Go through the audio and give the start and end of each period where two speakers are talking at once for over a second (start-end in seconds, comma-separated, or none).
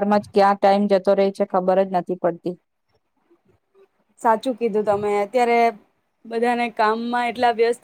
none